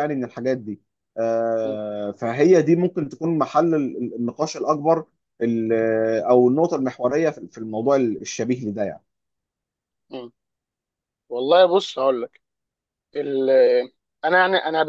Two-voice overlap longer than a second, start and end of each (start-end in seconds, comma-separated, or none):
none